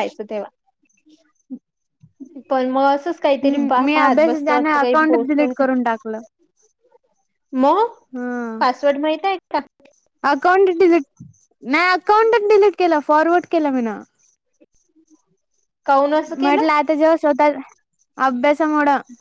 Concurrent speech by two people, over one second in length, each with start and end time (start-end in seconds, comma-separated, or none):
3.4-5.6